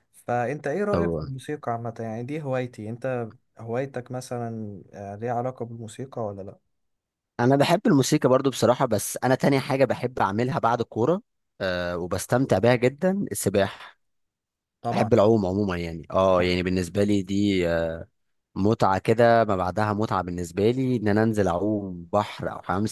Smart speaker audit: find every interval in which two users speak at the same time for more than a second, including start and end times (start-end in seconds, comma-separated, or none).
none